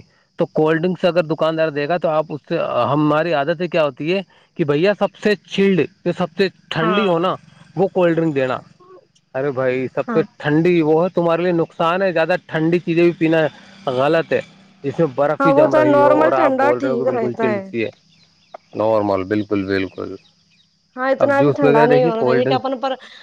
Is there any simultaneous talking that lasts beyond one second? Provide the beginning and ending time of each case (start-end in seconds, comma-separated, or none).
15.4-17.5, 21.2-22.7